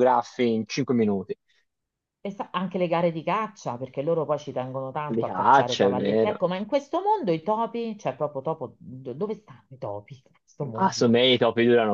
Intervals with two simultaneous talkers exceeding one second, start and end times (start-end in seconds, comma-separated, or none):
5.1-6.4